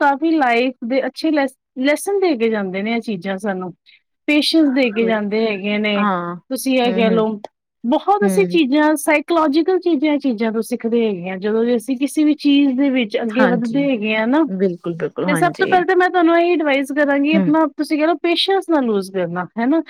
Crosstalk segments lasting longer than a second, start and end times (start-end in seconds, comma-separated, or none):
none